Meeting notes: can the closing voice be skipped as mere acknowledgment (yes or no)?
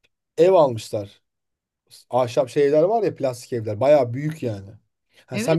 no